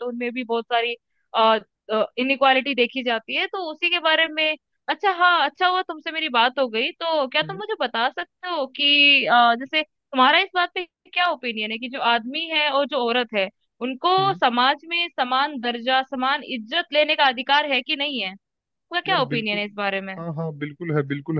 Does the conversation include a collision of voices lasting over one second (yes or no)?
no